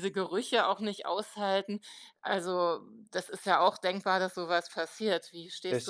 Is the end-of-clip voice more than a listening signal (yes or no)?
yes